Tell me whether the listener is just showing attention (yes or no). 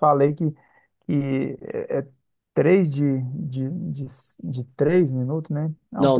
no